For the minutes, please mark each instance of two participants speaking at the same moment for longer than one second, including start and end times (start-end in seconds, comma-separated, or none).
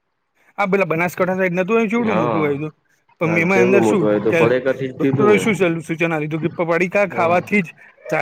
3.2-5.4